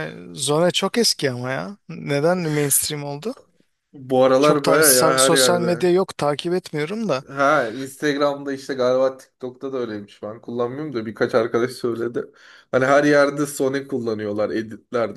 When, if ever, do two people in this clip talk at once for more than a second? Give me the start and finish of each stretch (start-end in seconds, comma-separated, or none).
4.4-5.9